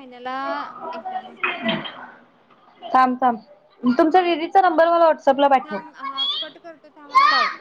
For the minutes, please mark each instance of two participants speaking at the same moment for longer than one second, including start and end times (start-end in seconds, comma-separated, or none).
none